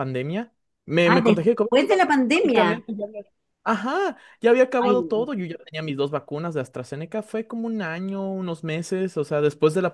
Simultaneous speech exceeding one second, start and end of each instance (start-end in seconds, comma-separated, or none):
1.0-2.8